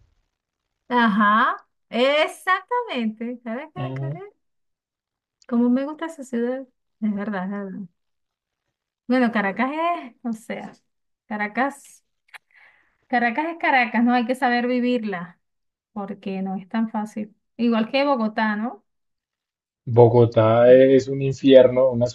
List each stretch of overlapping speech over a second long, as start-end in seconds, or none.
none